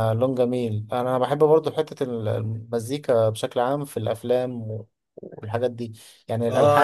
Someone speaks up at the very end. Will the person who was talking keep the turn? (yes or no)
no